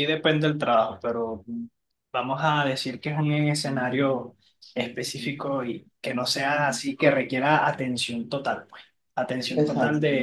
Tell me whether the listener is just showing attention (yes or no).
yes